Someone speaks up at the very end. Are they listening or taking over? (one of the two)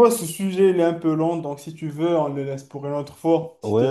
taking over